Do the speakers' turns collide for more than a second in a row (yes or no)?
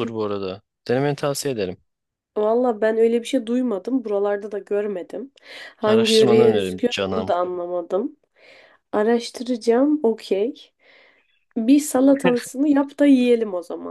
yes